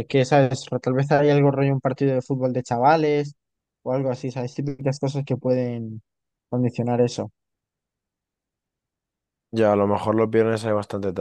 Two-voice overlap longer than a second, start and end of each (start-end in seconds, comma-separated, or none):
none